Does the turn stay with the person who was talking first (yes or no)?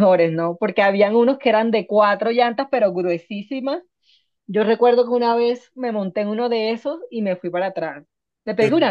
yes